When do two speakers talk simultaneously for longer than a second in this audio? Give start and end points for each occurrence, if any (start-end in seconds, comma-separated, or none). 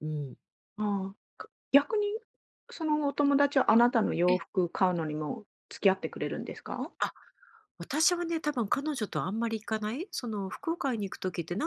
none